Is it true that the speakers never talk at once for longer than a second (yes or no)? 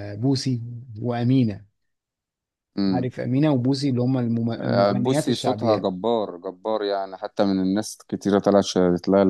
no